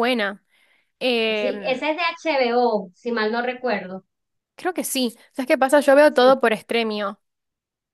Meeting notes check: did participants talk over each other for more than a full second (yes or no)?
no